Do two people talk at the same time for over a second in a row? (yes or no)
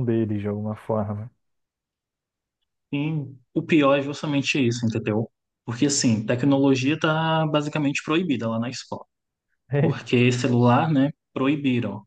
no